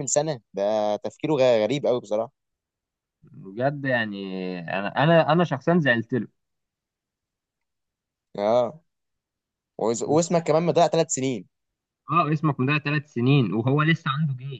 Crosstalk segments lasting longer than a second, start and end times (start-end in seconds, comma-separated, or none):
none